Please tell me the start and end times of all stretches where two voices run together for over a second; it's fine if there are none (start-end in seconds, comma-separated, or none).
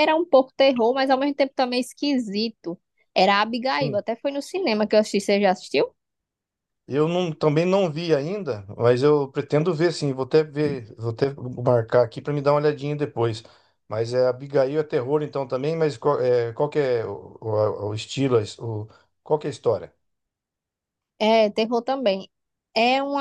none